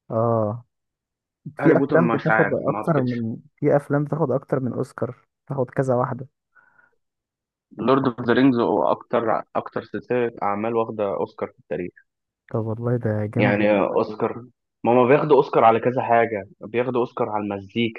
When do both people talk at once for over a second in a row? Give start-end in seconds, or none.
1.6-3.2